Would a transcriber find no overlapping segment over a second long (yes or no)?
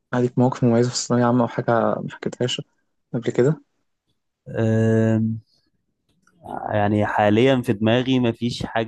yes